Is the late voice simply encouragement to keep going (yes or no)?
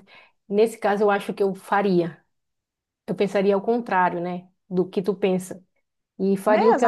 yes